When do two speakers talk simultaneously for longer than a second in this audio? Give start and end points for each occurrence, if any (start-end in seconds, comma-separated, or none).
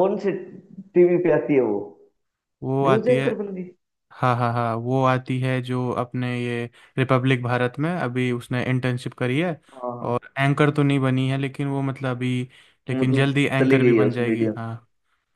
12.9-14.5